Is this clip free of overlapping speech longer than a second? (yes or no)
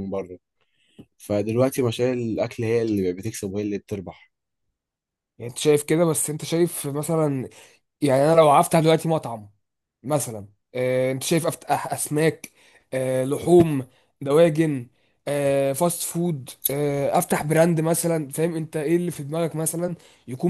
yes